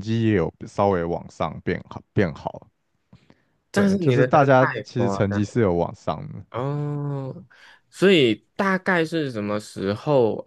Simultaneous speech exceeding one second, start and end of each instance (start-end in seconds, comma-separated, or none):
3.7-5.7